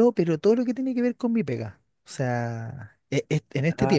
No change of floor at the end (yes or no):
yes